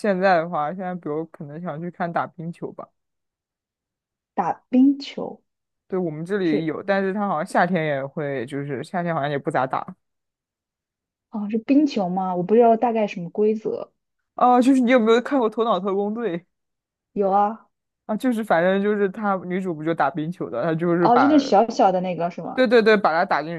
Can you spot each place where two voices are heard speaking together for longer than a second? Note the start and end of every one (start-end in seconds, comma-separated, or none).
none